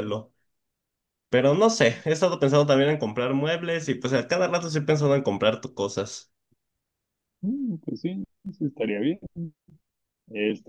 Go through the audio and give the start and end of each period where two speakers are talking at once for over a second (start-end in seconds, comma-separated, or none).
none